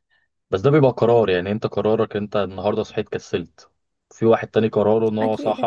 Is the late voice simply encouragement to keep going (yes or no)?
yes